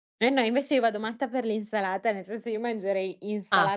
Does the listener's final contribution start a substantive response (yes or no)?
no